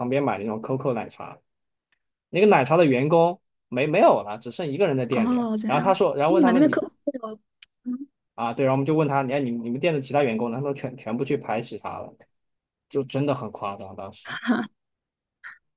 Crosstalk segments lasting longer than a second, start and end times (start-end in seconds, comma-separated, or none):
5.1-6.8